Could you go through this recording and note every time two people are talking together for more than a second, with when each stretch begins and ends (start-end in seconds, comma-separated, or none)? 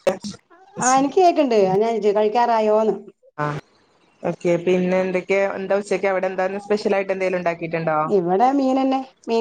none